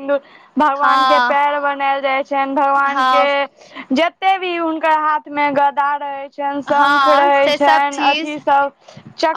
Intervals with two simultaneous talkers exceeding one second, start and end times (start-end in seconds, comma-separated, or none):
6.8-8.4